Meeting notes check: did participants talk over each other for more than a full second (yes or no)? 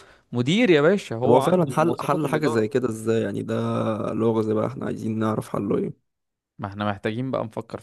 yes